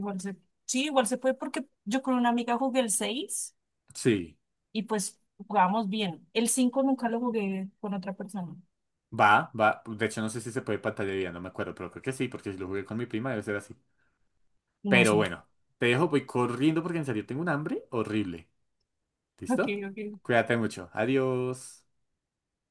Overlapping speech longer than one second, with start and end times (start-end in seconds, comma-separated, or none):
none